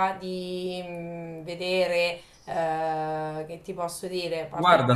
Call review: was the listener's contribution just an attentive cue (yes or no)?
no